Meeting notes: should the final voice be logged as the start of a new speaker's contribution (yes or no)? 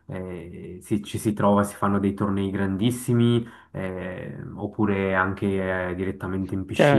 yes